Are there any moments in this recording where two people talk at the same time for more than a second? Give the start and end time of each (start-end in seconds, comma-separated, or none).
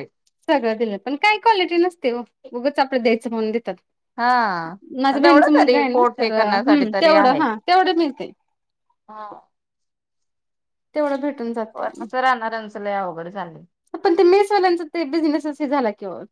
5.2-6.8